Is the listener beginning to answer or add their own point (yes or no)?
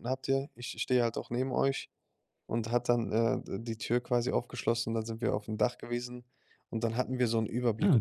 no